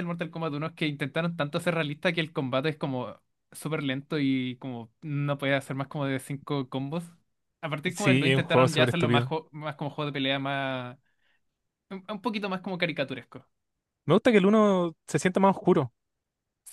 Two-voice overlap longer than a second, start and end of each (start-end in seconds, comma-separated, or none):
7.9-9.3